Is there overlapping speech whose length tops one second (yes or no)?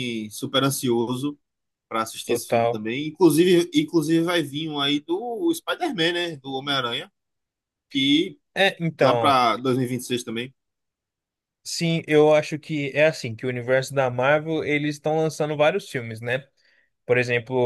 no